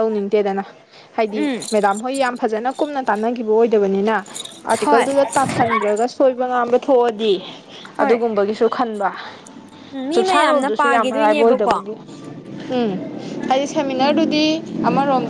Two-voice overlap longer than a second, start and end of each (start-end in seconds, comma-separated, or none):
10.1-11.8